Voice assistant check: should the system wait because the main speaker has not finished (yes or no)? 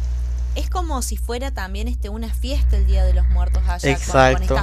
no